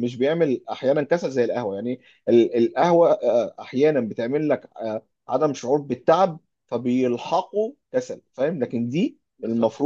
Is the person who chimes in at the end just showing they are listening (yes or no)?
yes